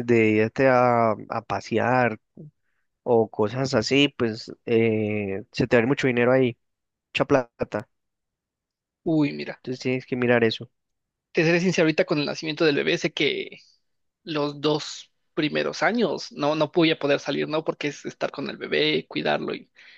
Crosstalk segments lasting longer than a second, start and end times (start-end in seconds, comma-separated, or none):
none